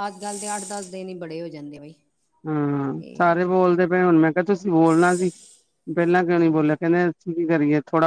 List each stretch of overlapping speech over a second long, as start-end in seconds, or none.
none